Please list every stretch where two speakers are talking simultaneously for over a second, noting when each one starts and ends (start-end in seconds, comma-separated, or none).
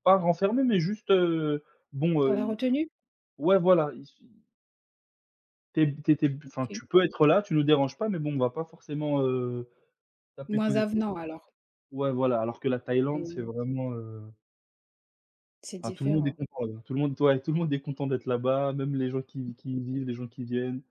none